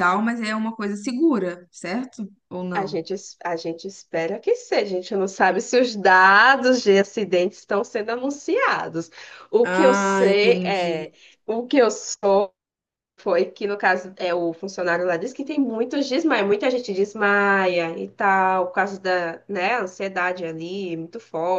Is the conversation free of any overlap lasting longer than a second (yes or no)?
no